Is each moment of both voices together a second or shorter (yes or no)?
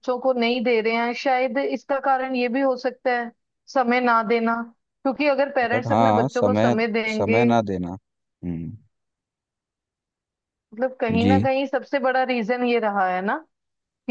no